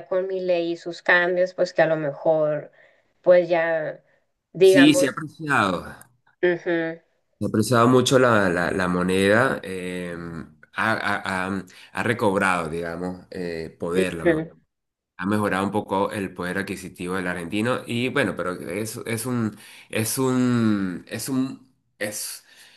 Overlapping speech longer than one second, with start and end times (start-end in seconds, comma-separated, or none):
none